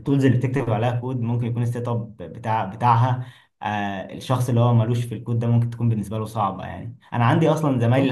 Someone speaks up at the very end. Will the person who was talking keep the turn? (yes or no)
yes